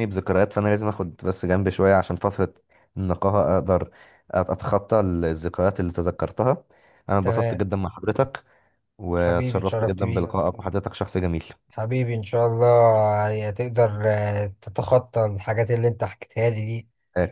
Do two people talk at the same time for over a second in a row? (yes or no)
yes